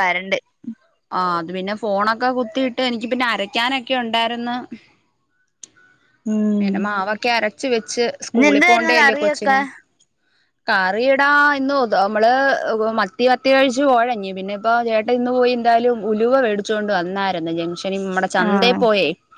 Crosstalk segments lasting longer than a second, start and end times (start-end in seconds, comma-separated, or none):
8.3-9.6